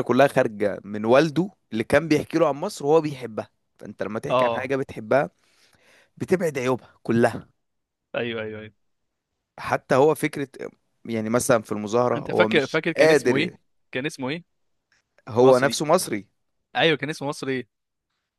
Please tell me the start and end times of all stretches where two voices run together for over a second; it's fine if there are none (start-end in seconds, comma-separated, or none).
12.2-13.5